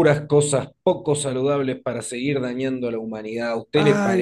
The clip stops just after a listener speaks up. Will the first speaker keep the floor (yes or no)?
no